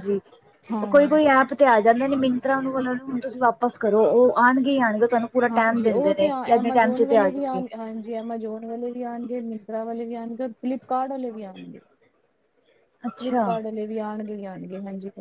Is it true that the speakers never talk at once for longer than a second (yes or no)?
no